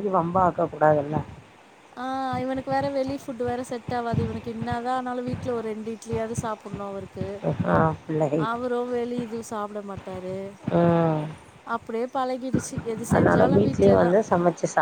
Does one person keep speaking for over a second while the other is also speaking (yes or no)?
no